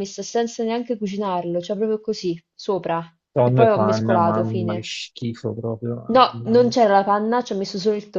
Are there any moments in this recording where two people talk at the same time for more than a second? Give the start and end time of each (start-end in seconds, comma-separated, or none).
3.4-4.9